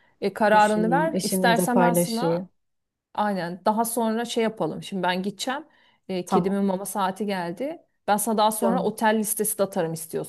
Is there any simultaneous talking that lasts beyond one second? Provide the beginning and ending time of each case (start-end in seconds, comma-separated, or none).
0.5-2.5